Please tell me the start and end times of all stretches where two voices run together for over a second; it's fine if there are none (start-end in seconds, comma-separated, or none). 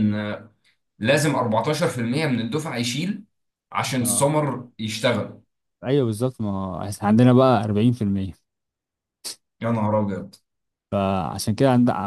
none